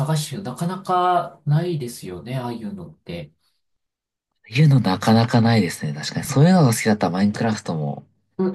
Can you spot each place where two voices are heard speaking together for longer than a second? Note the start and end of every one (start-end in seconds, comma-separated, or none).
none